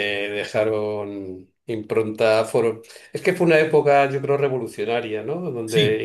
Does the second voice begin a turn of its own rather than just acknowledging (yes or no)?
no